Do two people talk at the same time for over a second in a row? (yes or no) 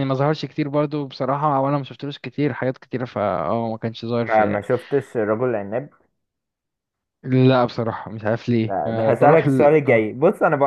yes